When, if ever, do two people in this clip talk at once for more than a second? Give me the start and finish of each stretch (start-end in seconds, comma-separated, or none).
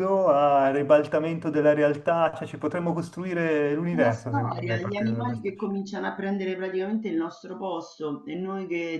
3.9-5.8